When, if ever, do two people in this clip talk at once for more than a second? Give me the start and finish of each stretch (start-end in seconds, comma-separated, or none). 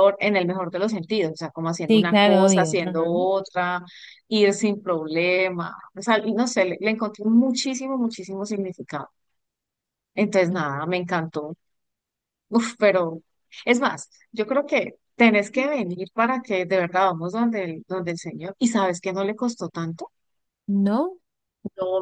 1.9-3.1